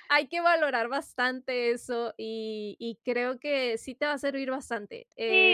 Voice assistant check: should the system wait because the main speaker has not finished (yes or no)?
no